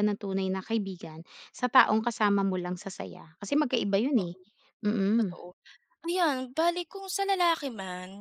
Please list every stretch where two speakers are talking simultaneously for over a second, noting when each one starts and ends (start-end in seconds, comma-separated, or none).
none